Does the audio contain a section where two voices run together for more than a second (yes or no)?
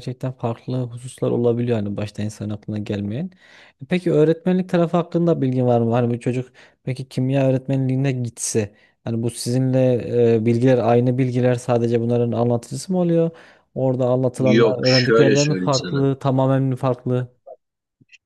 yes